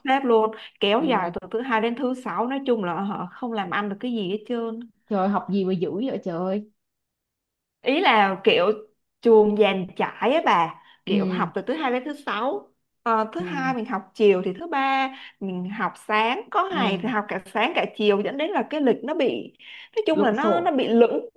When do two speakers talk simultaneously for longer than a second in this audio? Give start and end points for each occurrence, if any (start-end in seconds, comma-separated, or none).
none